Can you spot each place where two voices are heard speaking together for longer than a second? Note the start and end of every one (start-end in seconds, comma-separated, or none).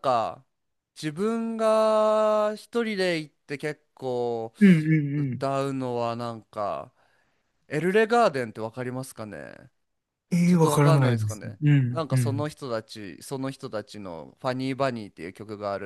10.4-12.5